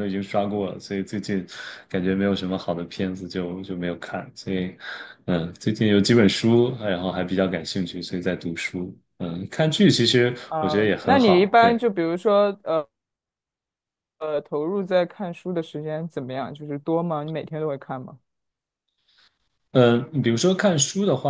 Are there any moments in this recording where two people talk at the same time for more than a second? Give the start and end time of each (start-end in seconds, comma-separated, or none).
10.5-11.8